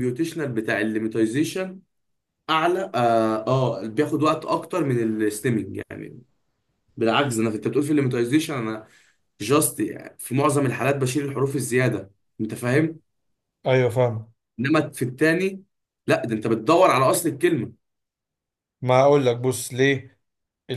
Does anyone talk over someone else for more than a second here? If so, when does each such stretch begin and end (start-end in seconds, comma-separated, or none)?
none